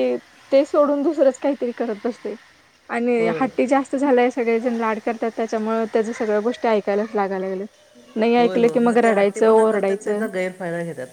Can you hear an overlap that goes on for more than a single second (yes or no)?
yes